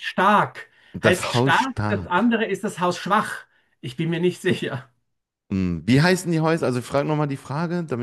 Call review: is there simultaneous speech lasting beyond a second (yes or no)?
yes